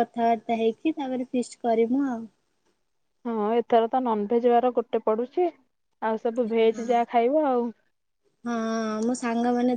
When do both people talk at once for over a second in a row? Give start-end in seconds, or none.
none